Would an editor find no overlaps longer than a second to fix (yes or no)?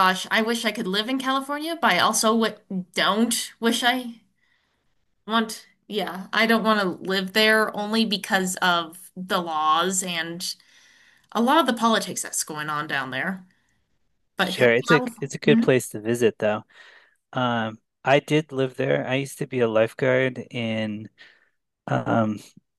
no